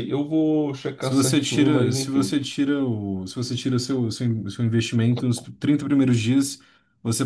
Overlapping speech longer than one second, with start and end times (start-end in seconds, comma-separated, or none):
1.0-2.4